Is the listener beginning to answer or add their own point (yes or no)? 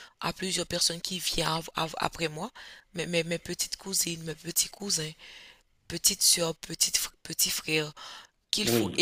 no